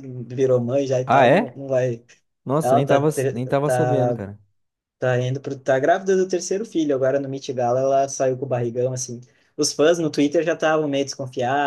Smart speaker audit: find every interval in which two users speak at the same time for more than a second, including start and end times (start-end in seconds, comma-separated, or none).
2.6-4.2